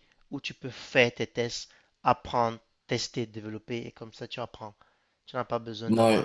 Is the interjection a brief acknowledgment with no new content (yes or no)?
no